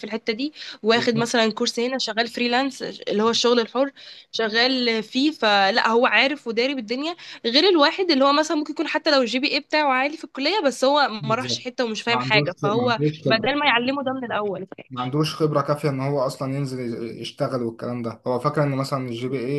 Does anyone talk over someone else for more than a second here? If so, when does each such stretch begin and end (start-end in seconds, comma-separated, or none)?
11.2-13.5